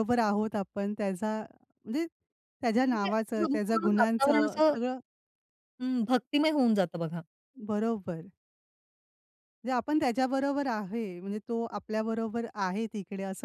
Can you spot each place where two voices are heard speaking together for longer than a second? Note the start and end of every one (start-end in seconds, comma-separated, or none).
2.9-4.8